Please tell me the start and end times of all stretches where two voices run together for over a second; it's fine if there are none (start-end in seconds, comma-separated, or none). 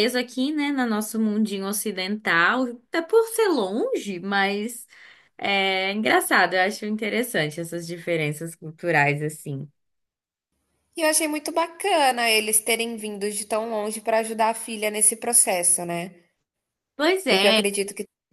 none